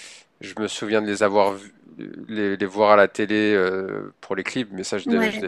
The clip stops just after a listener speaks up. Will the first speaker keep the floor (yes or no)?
yes